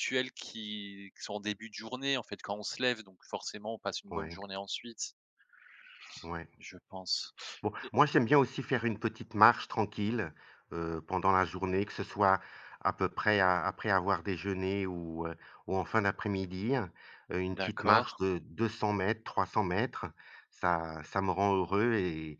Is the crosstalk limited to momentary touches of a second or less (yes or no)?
yes